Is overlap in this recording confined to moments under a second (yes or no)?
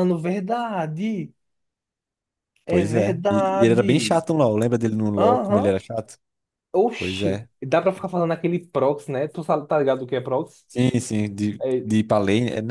no